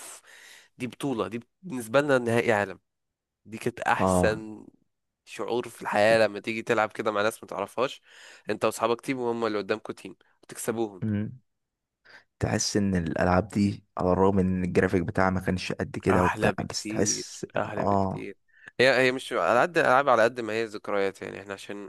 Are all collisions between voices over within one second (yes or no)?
no